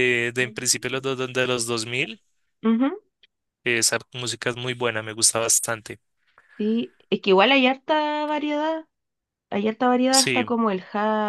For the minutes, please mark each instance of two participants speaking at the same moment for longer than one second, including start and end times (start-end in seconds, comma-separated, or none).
none